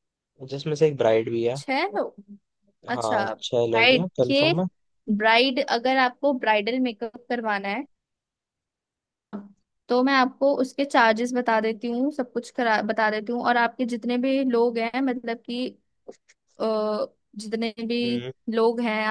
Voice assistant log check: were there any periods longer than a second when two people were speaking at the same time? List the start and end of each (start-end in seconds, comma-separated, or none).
2.9-4.5